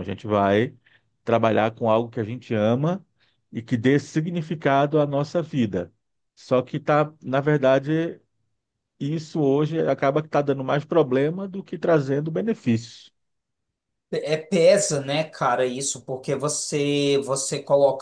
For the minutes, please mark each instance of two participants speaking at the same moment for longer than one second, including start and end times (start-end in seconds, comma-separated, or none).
none